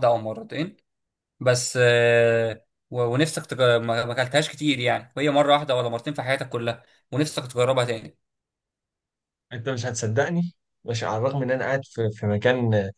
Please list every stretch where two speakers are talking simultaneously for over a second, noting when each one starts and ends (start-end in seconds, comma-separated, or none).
none